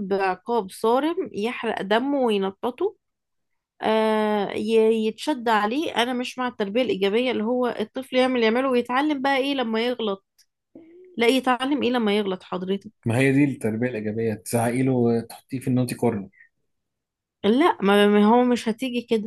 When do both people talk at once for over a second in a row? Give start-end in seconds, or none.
none